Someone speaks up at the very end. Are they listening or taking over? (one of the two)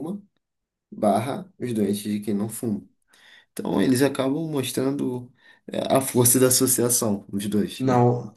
taking over